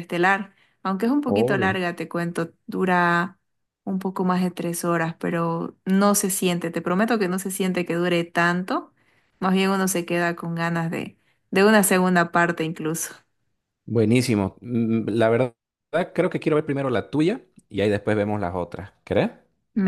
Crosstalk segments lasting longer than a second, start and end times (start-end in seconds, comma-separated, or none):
none